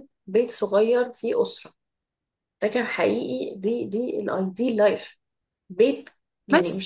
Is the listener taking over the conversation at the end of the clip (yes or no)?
no